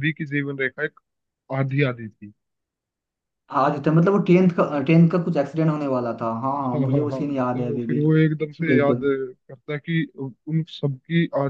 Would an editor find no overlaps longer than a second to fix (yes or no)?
no